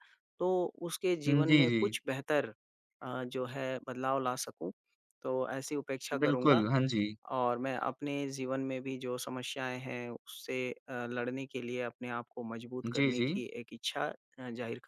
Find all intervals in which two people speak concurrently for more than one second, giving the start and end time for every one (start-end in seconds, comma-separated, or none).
none